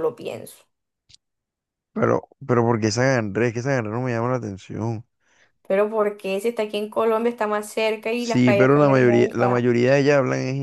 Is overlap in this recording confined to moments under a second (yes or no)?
no